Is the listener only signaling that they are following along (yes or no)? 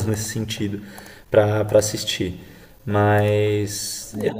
no